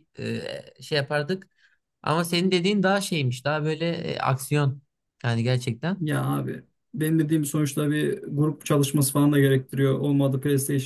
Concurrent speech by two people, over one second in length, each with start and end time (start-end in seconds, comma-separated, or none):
none